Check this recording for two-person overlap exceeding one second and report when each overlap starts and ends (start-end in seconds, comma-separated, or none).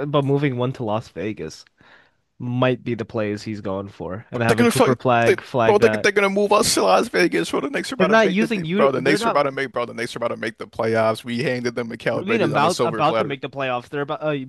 4.3-6.1, 8.0-9.4, 12.1-13.4